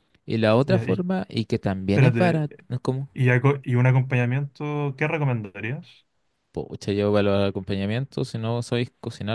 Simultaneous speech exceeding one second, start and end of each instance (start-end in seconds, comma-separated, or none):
none